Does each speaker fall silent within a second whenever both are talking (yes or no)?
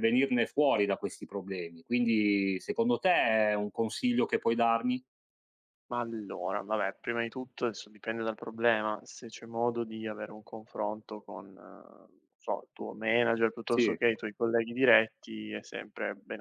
yes